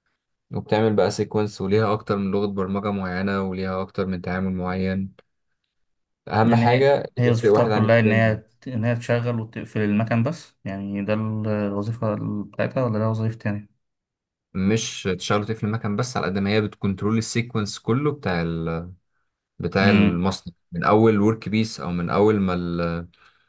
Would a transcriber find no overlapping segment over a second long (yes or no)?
no